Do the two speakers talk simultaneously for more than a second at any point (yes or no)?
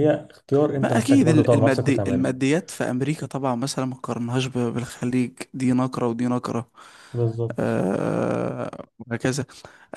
yes